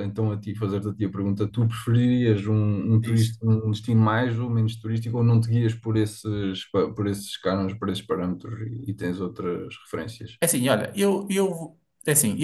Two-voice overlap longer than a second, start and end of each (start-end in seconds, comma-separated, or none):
none